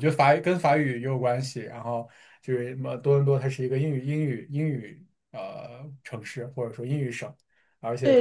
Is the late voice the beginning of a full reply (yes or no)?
yes